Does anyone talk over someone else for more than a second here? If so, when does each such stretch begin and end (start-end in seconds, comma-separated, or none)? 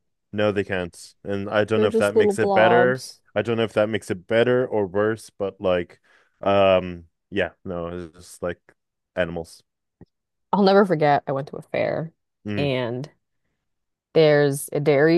1.7-3.2